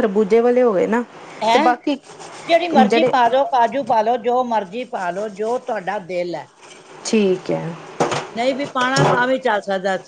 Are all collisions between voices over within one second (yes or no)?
yes